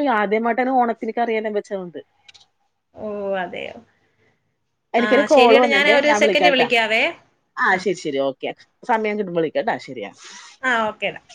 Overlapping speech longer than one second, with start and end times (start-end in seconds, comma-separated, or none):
5.0-6.7